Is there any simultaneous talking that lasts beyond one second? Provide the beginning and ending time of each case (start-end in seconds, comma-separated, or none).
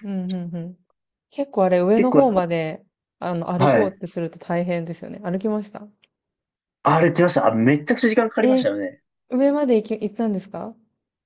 none